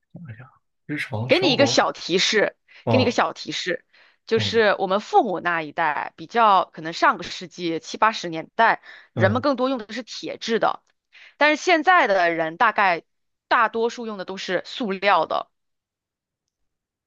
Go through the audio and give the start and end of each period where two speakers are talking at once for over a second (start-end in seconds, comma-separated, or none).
none